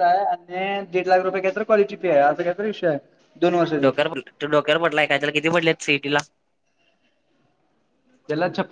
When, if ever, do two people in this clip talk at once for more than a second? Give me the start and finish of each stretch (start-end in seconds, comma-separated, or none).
none